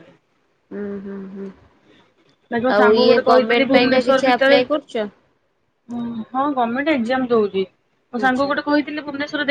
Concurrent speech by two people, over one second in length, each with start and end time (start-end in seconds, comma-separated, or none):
2.8-4.6